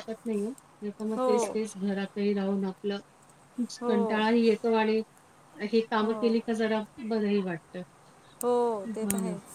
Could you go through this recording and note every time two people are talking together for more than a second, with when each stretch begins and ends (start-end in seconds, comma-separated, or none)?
none